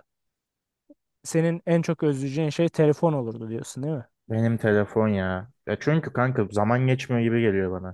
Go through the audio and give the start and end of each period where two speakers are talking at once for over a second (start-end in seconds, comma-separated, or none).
none